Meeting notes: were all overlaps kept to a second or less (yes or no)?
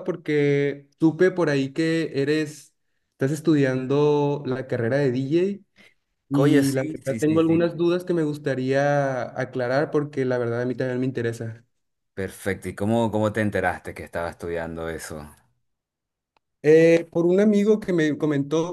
no